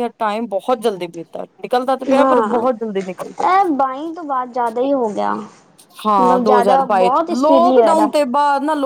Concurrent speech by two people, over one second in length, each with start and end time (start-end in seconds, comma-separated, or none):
6.2-7.8